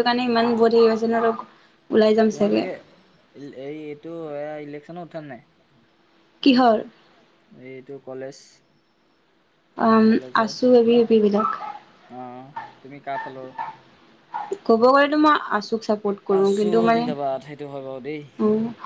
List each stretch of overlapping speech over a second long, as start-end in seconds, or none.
16.4-18.2